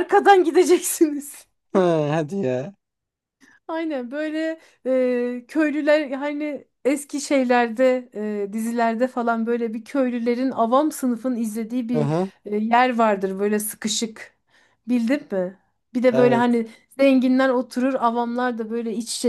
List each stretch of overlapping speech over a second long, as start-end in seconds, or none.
none